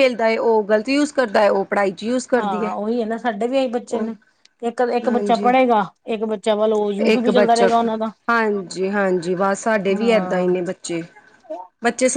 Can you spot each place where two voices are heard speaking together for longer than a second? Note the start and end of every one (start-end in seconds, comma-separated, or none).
none